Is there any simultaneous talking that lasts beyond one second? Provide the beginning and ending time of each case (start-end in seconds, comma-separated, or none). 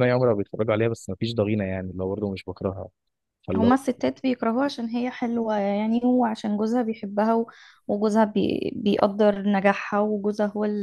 none